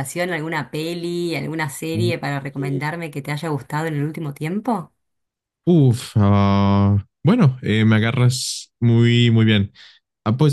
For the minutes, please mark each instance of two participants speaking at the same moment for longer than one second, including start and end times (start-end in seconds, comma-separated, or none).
none